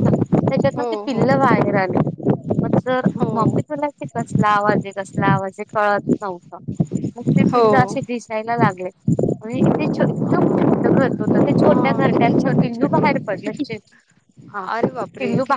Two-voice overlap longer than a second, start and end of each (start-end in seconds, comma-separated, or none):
11.6-13.2